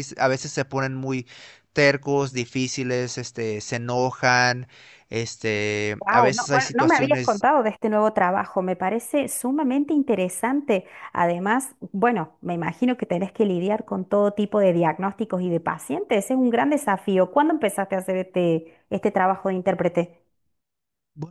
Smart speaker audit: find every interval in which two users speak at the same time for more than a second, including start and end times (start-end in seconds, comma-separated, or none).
6.0-7.4